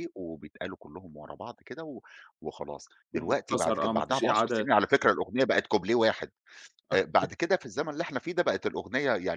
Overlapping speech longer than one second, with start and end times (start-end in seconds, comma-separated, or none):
3.1-4.7